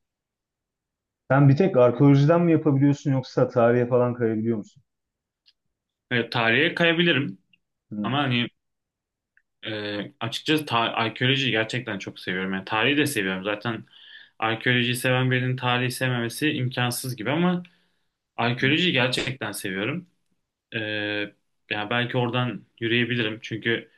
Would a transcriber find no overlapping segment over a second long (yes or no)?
yes